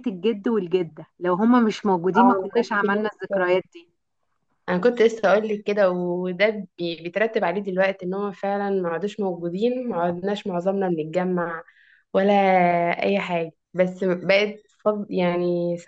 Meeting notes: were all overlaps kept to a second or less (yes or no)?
no